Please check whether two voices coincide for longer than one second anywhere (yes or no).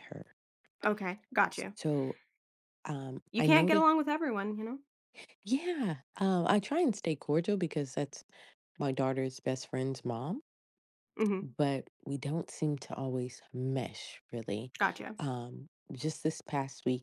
no